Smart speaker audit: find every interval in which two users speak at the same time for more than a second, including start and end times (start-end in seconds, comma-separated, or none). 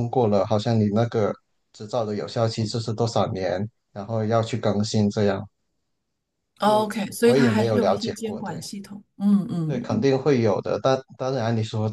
6.6-8.6